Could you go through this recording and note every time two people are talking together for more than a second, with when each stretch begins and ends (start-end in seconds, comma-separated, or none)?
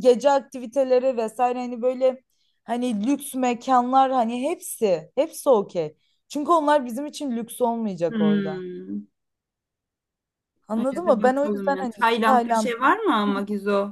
10.8-12.7